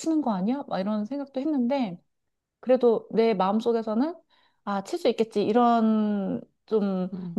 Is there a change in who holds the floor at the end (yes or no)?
no